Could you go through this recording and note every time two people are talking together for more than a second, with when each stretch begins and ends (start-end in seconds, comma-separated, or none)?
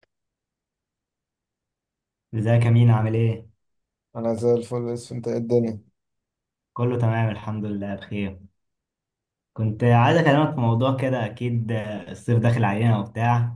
none